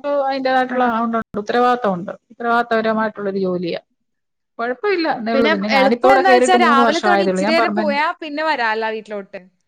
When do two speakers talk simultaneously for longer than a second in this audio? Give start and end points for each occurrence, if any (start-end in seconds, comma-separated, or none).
5.3-8.0